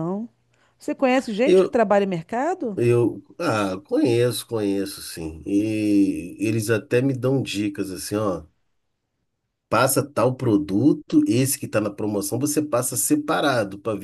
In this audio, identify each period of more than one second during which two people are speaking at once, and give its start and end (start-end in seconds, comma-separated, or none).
none